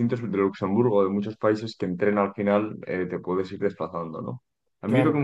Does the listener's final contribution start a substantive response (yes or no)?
no